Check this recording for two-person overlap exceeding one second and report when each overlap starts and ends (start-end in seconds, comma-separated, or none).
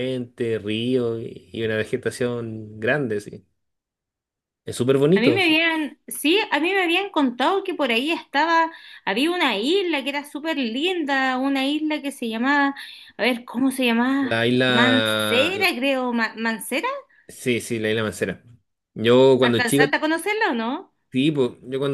14.2-15.7